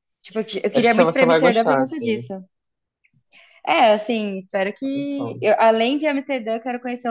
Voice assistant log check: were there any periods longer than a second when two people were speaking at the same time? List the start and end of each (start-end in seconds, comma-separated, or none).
0.7-2.2